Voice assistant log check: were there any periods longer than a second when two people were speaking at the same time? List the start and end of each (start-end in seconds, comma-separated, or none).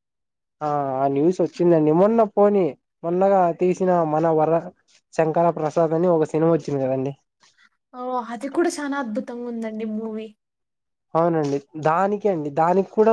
none